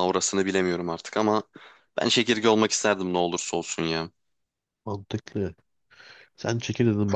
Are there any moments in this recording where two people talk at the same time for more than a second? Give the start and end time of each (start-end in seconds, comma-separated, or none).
none